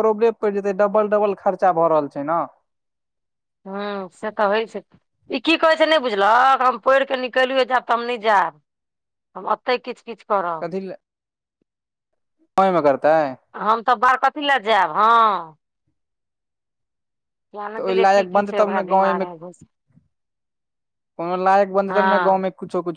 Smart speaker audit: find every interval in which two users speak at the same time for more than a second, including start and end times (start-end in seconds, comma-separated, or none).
17.7-19.3